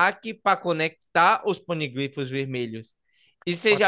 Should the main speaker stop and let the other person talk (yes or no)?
no